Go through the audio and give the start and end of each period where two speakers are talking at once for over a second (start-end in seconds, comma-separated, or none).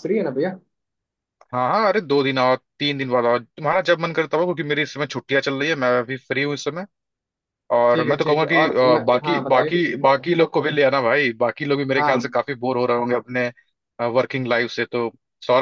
7.9-9.8